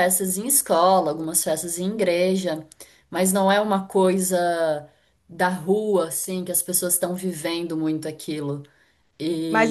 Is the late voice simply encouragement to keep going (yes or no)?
no